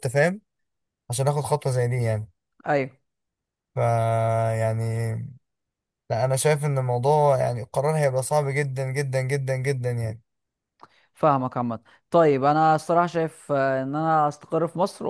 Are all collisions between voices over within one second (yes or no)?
yes